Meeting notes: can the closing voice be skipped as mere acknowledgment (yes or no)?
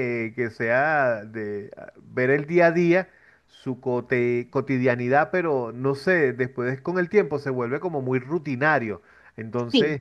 yes